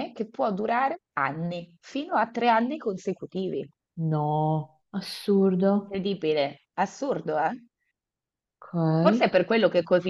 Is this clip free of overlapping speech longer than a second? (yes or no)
yes